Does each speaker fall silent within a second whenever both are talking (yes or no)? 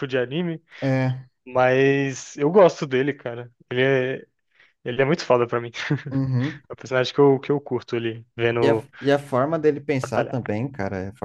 yes